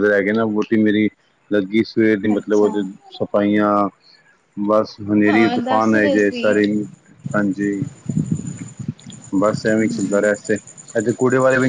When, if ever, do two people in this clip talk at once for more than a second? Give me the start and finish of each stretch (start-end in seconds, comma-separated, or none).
5.3-6.5